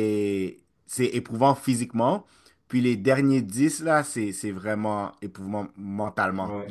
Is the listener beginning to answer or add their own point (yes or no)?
no